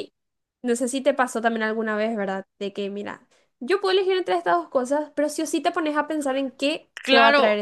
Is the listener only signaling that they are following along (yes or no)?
no